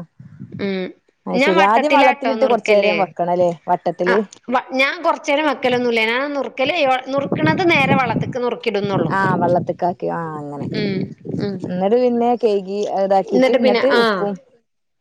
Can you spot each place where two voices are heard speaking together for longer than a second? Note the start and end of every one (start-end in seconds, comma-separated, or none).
1.4-2.9